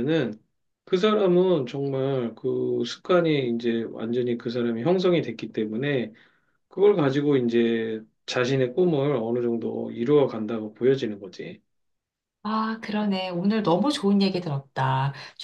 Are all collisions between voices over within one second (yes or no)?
yes